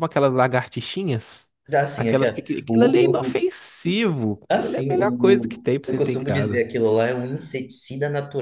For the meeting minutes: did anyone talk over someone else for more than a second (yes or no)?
yes